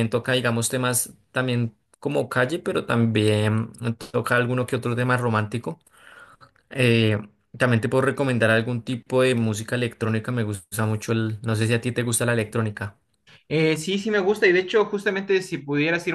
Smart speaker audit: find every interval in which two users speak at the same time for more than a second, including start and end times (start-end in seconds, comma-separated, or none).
none